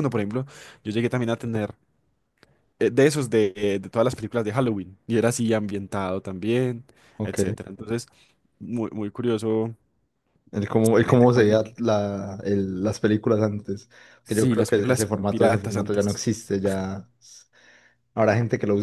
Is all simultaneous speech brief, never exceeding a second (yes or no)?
no